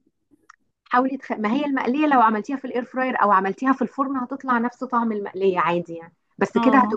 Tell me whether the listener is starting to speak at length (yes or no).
no